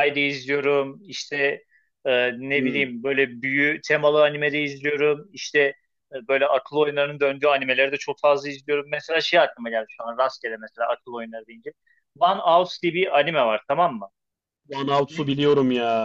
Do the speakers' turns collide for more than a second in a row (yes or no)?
no